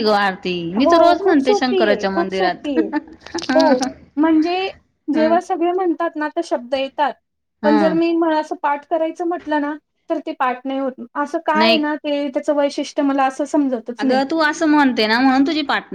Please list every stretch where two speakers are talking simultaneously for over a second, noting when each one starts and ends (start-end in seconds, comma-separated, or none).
0.8-2.7